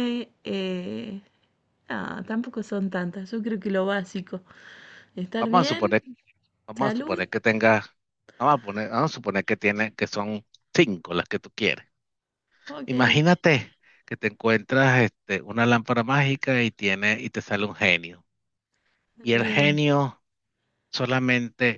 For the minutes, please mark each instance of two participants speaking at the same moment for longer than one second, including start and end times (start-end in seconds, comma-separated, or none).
none